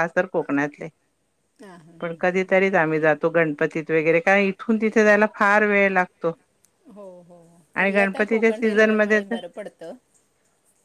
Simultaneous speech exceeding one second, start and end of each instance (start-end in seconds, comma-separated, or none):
7.8-9.4